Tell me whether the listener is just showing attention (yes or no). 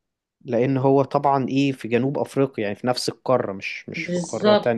no